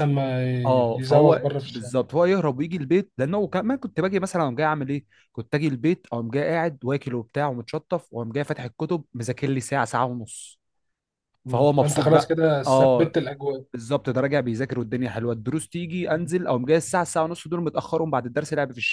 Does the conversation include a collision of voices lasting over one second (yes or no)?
yes